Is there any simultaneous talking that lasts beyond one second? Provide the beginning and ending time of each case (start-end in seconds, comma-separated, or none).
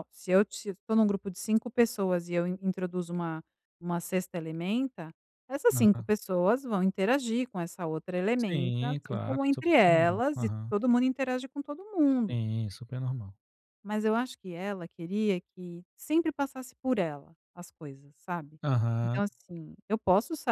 8.4-10.7